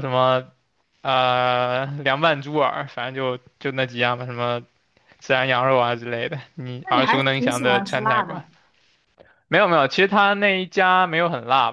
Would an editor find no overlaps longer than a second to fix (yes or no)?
no